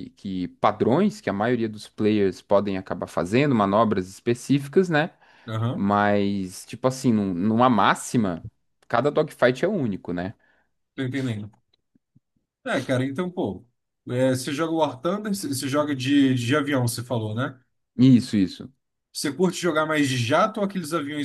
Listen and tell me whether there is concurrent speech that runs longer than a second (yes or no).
no